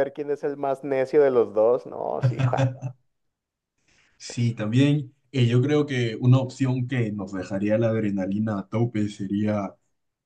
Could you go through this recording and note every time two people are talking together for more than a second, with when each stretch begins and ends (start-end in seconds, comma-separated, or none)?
none